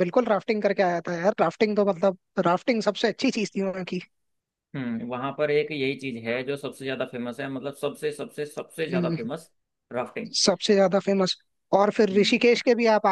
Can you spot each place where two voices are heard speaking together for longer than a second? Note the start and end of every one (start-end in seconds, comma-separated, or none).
none